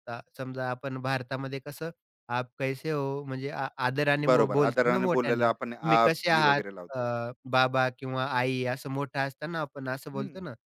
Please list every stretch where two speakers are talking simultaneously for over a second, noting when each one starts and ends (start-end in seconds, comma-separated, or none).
4.3-7.0